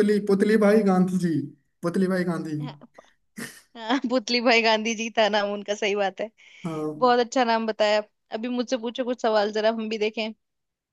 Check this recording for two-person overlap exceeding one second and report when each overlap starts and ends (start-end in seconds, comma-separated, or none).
none